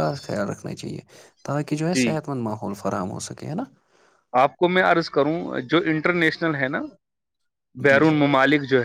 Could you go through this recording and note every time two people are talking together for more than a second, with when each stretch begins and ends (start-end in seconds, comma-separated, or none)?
none